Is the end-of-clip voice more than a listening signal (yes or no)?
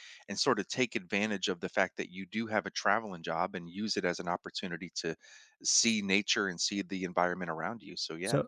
yes